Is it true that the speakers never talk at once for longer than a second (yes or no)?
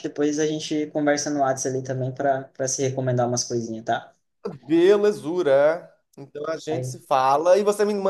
yes